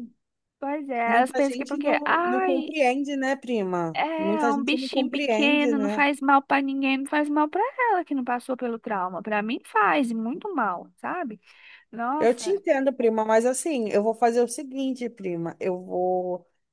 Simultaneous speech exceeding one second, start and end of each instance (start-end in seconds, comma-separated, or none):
1.1-2.7, 3.9-6.0